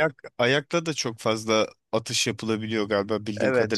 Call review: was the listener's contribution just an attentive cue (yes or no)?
no